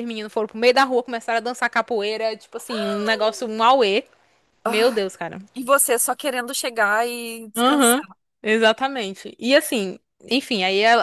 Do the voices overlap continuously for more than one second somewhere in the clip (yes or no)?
no